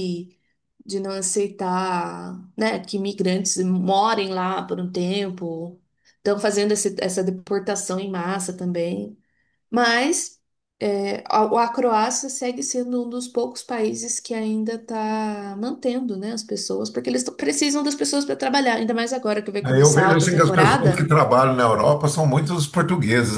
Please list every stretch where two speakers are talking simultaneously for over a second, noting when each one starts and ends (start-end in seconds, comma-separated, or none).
19.6-21.1